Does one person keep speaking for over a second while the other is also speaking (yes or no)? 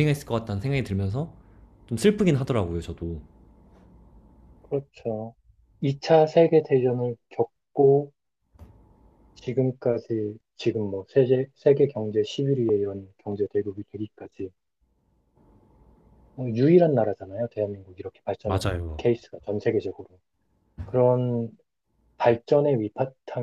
no